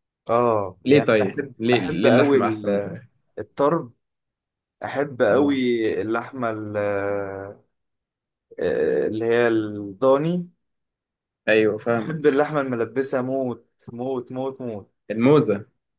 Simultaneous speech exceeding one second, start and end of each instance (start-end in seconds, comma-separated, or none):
0.8-2.4